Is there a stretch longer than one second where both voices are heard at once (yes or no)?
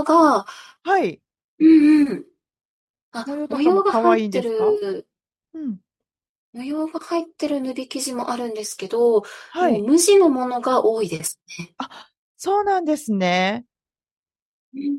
yes